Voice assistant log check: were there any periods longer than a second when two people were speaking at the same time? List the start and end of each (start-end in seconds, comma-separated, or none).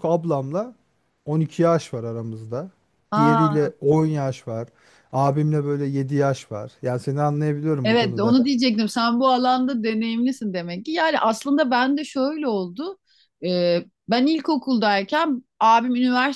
none